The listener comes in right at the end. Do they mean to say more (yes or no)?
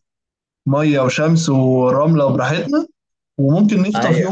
no